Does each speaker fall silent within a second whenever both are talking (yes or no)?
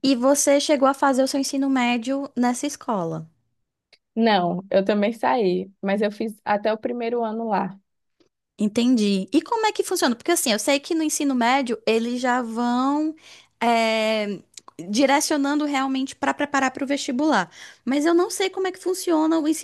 yes